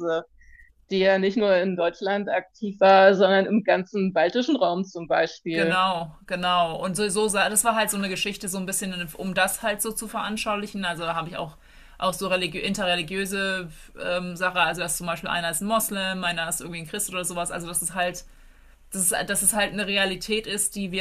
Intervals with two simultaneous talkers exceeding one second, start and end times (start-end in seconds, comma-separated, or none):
none